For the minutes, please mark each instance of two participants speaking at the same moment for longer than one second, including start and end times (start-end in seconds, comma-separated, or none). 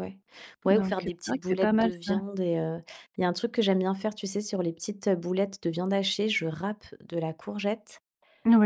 0.7-2.1